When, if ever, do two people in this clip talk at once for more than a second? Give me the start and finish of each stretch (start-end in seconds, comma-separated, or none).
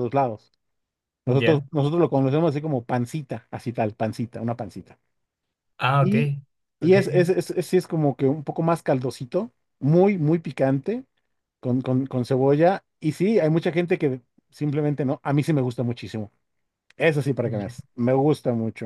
none